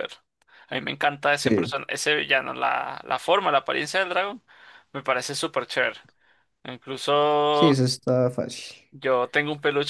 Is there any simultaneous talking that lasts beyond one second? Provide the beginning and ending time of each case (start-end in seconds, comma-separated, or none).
none